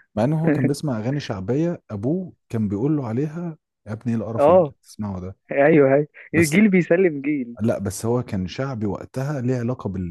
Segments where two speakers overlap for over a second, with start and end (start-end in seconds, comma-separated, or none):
none